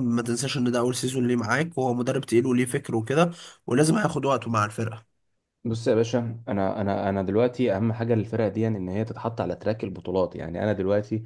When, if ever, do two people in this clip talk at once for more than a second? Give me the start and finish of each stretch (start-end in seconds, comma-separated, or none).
none